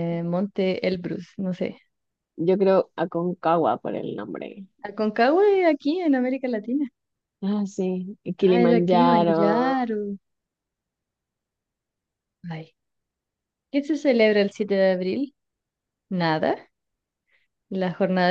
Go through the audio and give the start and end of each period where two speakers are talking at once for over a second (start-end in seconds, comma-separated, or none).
8.4-9.8